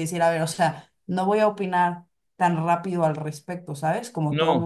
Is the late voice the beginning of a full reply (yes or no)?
yes